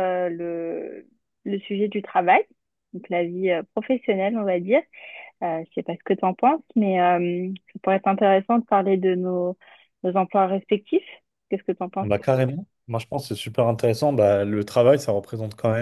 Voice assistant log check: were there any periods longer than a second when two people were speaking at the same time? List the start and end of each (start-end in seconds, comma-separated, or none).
none